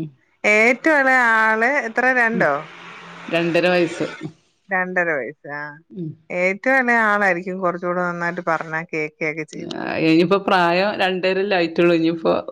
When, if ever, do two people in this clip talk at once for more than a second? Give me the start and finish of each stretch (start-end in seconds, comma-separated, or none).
none